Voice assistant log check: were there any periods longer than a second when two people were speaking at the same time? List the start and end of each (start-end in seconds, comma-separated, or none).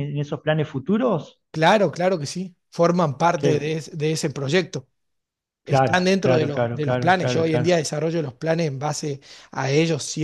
5.7-7.8